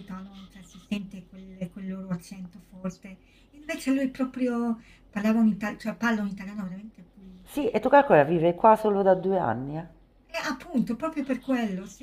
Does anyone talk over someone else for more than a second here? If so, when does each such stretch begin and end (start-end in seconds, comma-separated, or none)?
none